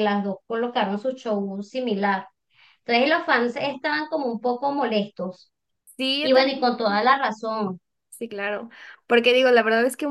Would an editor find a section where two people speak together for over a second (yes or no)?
no